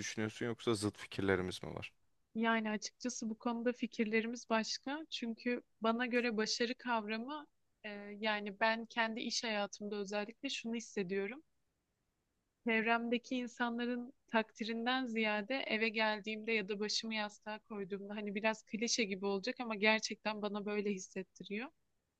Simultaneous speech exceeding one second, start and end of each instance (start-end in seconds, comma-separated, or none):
none